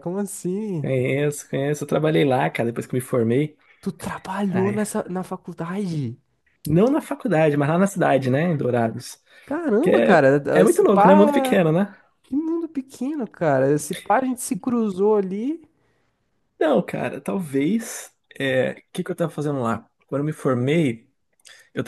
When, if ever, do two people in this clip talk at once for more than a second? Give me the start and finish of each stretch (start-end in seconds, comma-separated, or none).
9.8-11.6